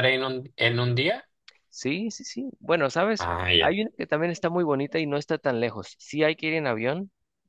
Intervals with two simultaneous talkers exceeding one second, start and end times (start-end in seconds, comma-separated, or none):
none